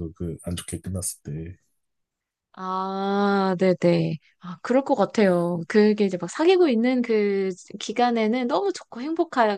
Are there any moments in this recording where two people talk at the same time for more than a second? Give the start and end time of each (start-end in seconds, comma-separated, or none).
none